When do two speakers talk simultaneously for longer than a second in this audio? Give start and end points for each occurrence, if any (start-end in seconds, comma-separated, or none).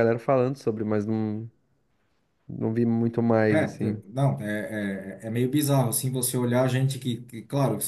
none